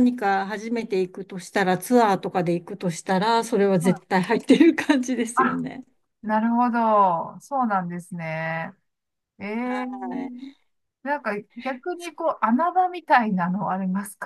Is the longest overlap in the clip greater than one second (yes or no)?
no